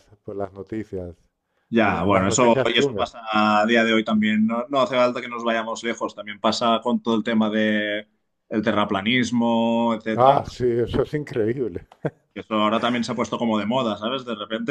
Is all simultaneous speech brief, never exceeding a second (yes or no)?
no